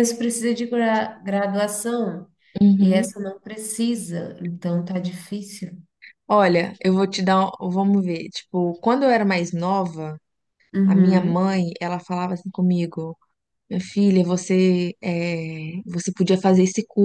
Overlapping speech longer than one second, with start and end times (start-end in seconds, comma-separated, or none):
none